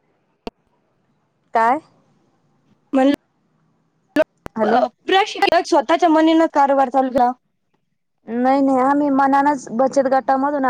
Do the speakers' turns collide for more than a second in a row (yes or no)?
no